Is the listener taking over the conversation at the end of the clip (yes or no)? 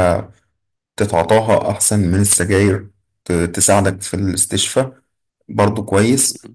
no